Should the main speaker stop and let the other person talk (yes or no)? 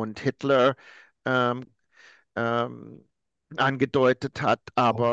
no